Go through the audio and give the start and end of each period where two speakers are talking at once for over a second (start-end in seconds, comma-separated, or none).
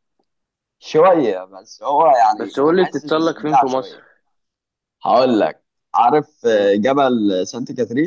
2.4-4.0